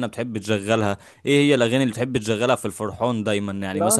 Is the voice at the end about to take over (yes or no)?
yes